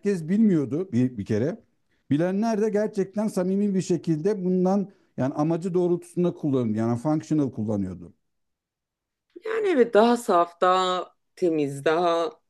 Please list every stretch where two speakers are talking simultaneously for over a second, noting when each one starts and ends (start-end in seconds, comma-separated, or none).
none